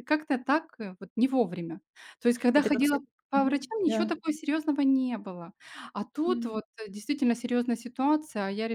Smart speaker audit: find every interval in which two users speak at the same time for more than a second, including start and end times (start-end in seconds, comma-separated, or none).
2.5-4.1